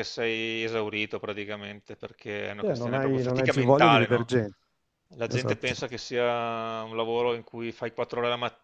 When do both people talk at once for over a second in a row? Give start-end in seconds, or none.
2.6-4.3